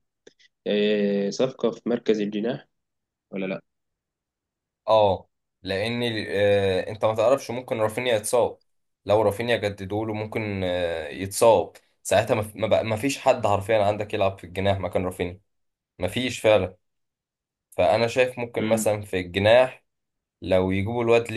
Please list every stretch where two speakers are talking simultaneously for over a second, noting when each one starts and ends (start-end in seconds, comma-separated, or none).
none